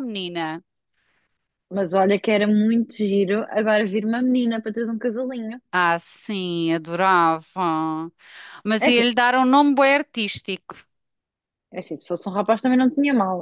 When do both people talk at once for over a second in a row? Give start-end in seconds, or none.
none